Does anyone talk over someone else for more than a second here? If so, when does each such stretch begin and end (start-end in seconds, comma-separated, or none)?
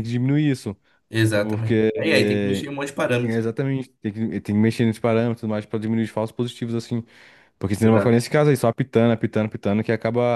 1.3-2.6